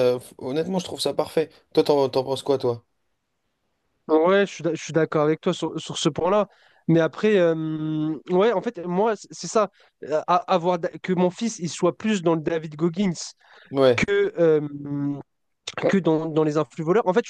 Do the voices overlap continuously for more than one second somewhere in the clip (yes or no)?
no